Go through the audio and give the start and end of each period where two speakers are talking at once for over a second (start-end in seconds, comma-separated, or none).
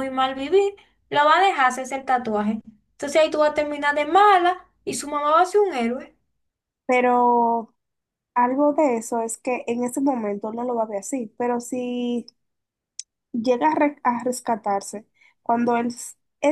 none